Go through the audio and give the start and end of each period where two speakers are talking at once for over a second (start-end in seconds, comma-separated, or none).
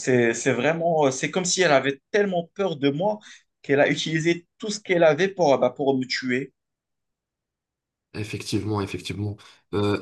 none